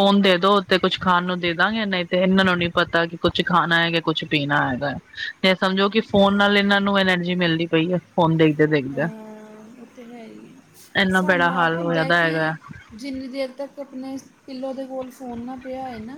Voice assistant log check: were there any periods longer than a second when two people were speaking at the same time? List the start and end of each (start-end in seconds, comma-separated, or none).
11.2-12.5